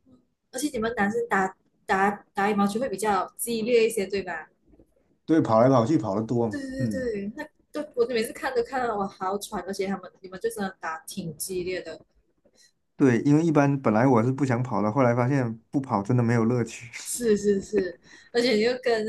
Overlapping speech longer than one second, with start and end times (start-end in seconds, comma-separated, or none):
none